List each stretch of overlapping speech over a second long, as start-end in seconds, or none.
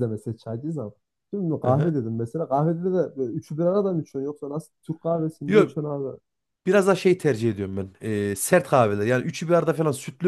none